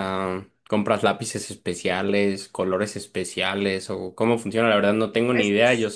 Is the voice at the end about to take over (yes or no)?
no